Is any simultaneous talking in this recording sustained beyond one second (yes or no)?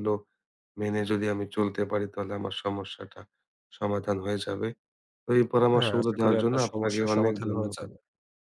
yes